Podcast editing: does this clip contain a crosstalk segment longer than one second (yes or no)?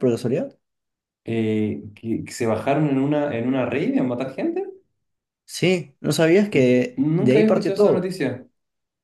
yes